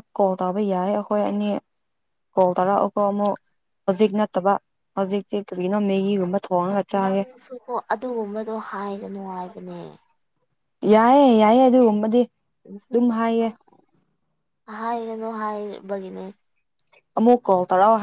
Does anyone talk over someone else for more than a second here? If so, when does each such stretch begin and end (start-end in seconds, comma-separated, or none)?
none